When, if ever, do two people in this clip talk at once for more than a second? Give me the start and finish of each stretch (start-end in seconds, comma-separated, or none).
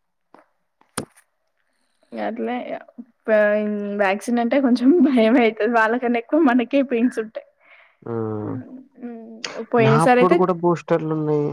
none